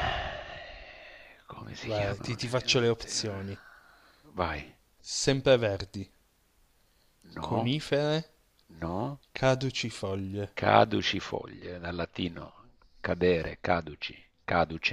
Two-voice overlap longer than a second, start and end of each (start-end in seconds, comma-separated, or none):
1.8-3.4